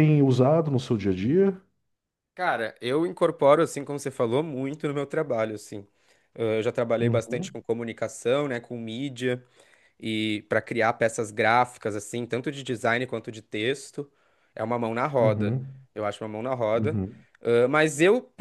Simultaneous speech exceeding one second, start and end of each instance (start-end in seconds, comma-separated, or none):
none